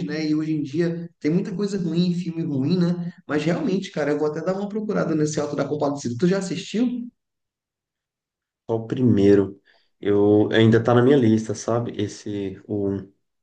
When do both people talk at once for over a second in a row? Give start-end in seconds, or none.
none